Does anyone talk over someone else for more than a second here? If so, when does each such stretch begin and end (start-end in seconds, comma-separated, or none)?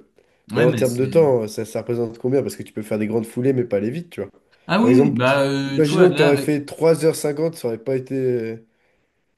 4.8-6.6